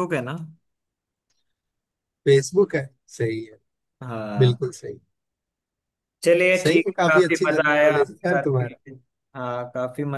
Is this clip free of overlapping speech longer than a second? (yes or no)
no